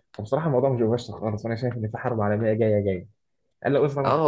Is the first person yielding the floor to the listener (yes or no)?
yes